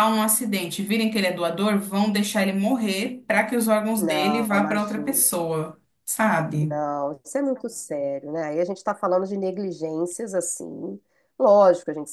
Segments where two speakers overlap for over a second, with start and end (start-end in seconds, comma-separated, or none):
4.0-5.3